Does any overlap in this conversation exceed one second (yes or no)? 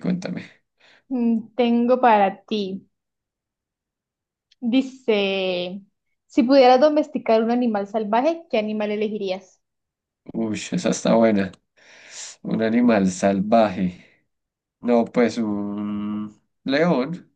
no